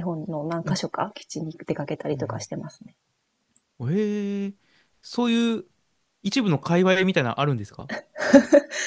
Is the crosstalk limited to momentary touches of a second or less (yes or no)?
yes